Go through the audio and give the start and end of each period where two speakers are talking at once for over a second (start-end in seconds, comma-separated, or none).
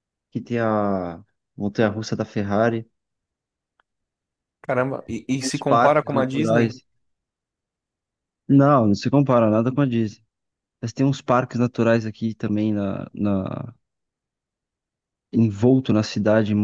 5.3-6.7